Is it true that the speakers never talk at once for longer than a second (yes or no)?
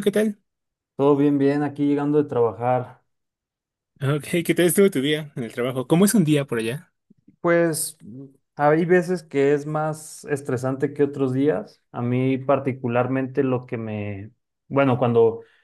yes